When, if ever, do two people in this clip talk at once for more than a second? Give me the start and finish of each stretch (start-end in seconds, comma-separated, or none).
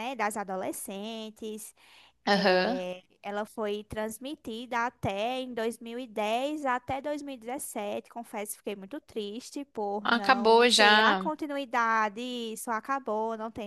10.0-11.3